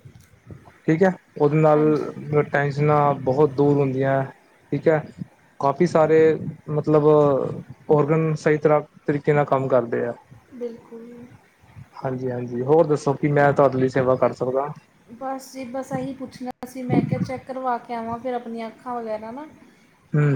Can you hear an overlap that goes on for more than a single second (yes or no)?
no